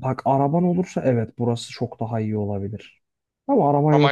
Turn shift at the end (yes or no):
no